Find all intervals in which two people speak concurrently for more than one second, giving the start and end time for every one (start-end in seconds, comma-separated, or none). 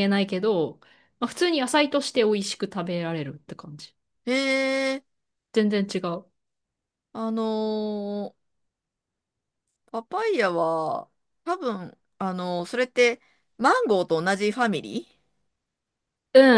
none